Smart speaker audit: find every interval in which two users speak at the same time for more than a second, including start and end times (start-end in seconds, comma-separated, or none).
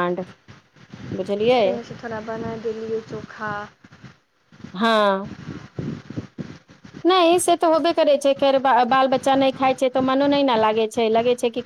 none